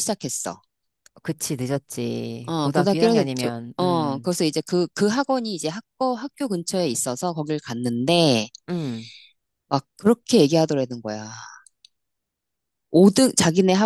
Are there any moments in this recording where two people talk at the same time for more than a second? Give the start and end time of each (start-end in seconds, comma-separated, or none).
2.5-4.3